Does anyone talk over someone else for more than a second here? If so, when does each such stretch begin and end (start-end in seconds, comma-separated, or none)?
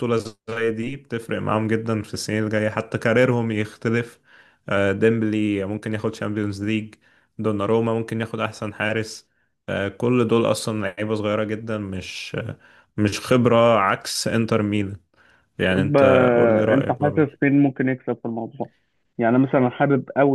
15.7-17.4